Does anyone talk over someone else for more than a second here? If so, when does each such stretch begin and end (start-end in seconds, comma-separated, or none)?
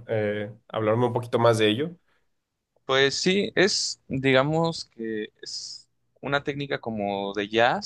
none